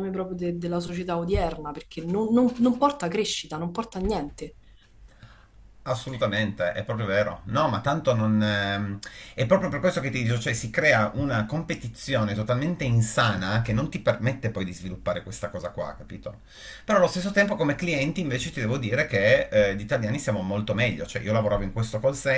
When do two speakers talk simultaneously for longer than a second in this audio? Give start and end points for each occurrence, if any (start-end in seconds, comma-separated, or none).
none